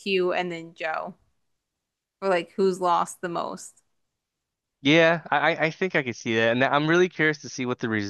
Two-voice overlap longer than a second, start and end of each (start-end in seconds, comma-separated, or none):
none